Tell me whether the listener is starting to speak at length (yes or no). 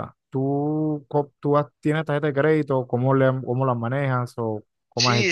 yes